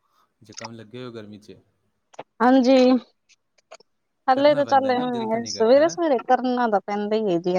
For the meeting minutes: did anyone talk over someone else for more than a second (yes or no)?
yes